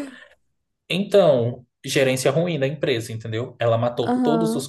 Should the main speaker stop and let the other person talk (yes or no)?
no